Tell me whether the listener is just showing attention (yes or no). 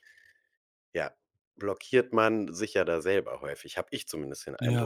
no